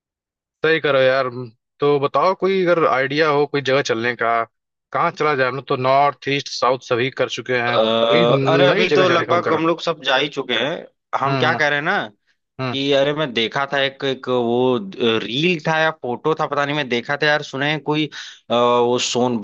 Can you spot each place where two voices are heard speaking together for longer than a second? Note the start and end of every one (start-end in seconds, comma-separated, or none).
7.7-9.7